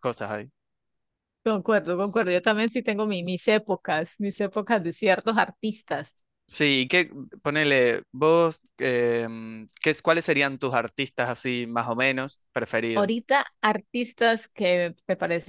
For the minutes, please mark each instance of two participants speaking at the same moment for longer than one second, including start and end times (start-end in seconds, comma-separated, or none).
none